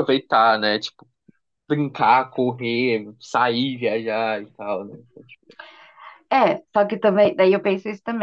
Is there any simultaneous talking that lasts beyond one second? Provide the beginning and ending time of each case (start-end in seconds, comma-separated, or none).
none